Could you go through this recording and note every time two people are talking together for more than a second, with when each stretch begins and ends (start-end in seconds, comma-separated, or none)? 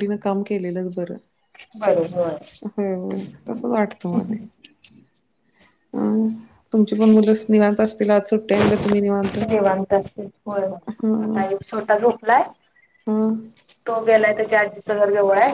none